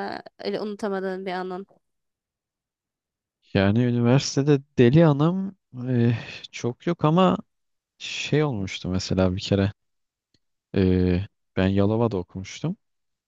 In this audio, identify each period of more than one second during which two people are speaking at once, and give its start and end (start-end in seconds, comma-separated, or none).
none